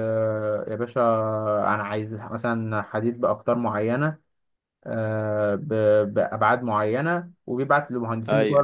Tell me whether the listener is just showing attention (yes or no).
yes